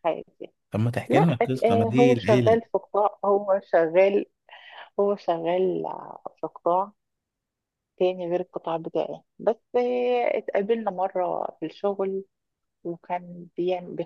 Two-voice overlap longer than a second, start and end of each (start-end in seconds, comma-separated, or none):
1.1-2.6